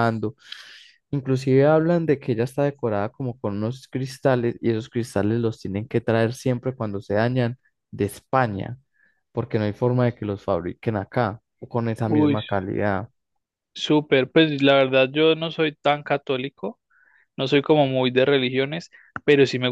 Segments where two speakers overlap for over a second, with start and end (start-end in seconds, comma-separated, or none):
none